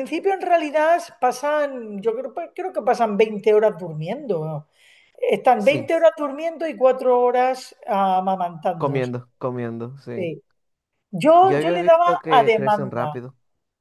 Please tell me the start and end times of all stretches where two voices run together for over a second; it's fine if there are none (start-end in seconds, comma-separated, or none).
11.4-13.2